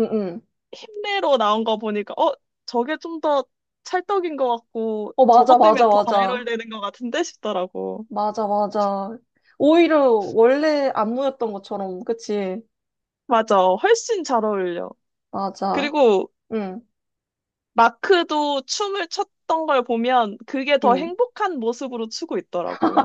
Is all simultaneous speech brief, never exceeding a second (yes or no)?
no